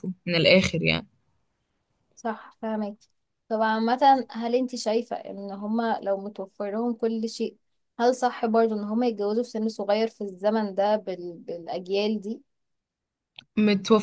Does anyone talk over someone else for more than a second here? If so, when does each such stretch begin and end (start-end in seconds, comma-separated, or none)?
none